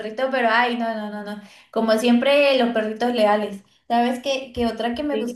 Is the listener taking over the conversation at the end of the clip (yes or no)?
no